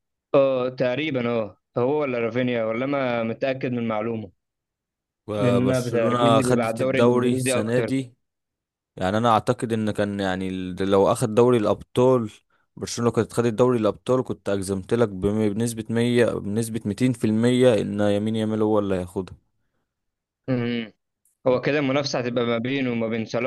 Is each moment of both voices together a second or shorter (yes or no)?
no